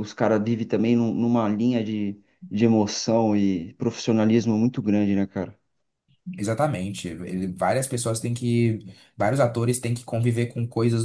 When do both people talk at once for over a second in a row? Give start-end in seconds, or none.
none